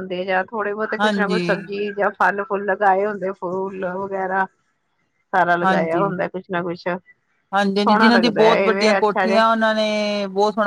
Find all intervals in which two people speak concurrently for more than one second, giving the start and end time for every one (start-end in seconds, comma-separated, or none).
7.8-9.4